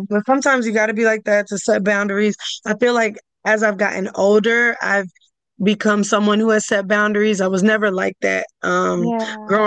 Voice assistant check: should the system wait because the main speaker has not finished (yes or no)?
yes